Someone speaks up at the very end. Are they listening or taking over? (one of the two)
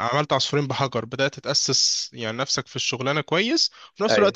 listening